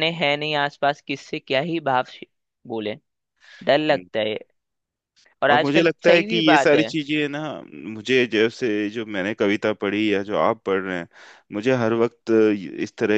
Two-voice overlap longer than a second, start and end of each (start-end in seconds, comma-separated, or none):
5.5-6.9